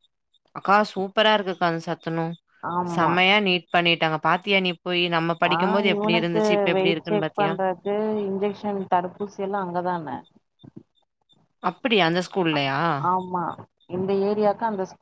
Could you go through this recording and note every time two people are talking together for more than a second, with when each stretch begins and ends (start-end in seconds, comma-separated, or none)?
5.6-7.5